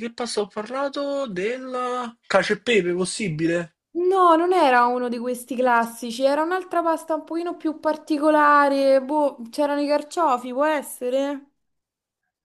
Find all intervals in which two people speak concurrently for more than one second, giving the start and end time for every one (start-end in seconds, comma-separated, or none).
none